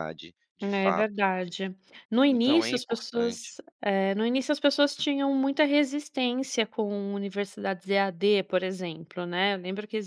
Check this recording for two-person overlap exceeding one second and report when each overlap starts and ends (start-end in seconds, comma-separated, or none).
2.2-3.6